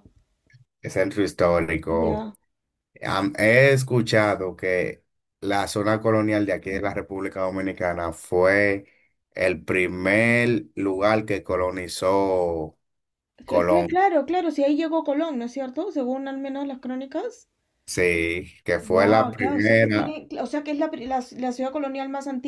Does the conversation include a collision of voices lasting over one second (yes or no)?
yes